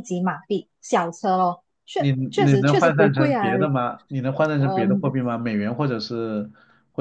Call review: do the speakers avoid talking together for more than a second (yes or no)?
no